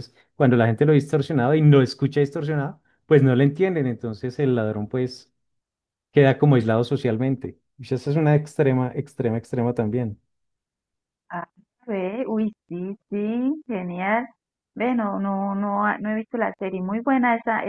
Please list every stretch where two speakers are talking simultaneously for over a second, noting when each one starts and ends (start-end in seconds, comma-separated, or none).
none